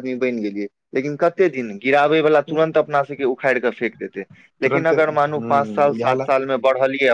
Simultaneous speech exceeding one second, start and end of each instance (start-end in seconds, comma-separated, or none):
4.7-6.3